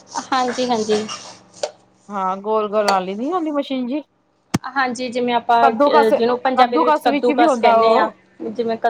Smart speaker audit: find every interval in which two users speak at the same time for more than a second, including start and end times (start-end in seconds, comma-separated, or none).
6.6-8.1